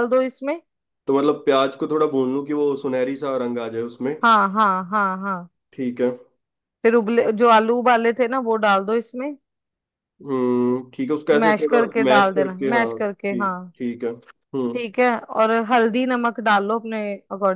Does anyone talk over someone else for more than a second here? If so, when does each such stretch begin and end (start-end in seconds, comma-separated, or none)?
11.4-13.6